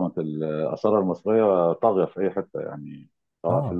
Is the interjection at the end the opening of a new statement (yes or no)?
no